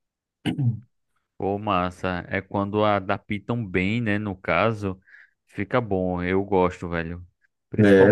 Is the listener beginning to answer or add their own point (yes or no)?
no